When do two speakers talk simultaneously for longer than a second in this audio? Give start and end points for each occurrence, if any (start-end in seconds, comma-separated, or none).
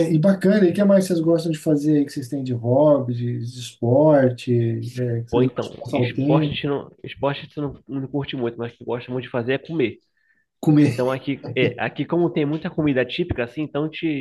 5.3-6.5